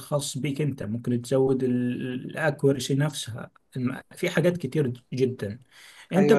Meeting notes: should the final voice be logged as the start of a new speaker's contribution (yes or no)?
no